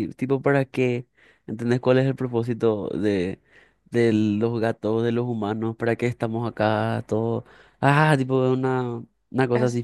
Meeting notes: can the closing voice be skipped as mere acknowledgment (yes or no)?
yes